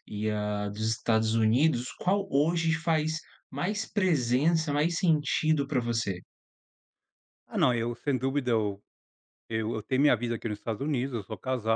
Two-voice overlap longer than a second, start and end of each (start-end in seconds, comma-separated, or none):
none